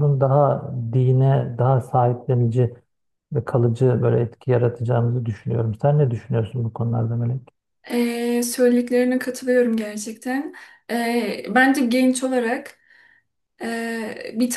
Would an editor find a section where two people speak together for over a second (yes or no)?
no